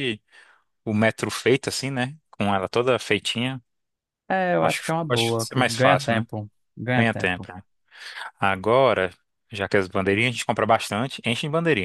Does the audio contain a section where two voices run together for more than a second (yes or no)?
yes